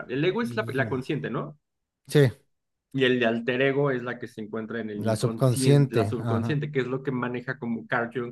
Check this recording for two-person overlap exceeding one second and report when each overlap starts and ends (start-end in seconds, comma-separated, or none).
4.9-6.6